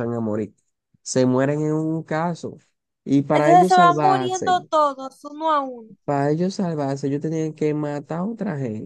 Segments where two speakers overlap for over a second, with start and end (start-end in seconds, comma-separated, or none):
3.3-4.5